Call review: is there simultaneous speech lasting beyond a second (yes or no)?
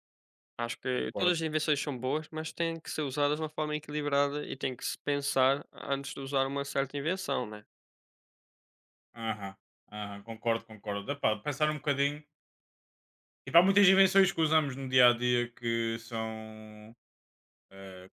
no